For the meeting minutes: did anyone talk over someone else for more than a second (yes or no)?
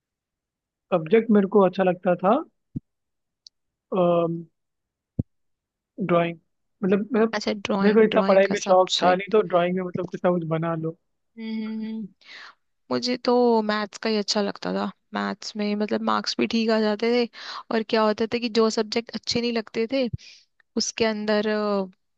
yes